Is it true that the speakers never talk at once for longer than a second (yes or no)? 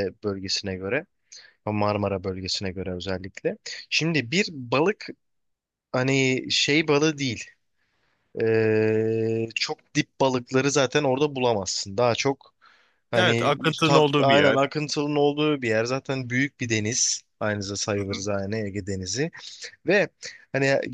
no